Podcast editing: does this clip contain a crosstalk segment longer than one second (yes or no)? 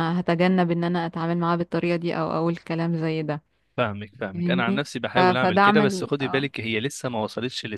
yes